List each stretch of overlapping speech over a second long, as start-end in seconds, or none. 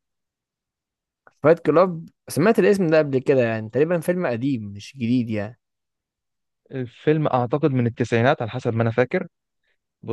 none